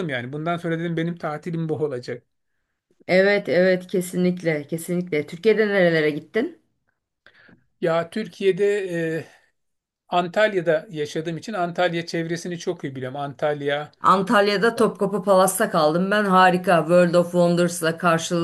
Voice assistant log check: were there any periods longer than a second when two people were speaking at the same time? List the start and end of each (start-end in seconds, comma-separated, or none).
none